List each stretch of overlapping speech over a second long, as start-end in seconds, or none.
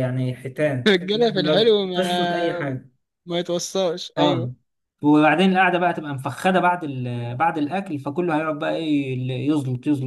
0.9-2.6